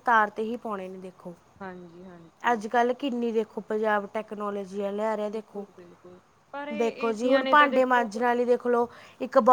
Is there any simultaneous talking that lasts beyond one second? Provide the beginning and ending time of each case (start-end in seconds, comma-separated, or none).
6.8-8.1